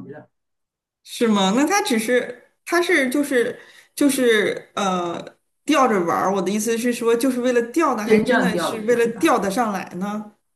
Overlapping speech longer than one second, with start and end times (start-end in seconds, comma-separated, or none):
8.1-9.4